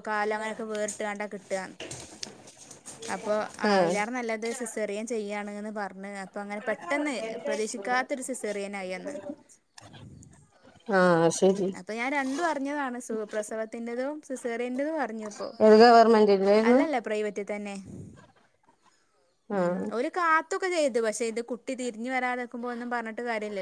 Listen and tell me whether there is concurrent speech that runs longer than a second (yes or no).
no